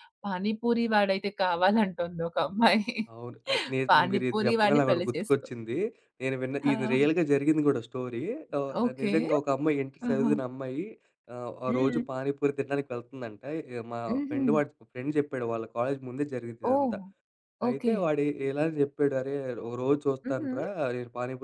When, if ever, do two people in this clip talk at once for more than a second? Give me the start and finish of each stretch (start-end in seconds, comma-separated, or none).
3.9-5.5